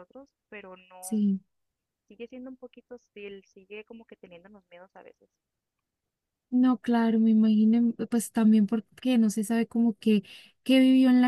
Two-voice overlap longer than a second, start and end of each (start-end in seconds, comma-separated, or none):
none